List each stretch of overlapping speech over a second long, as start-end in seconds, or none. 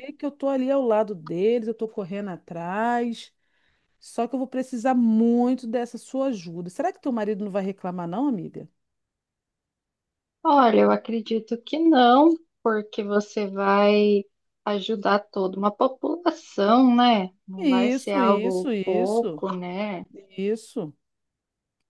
17.6-19.4